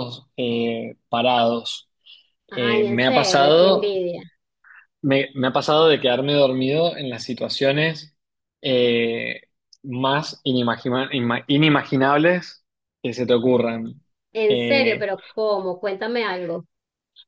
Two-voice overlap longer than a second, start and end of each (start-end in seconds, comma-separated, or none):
2.5-4.0